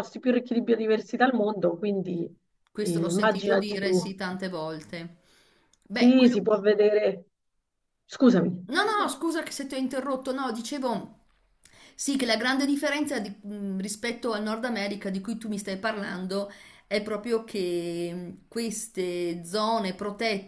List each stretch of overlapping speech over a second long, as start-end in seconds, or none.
2.7-4.1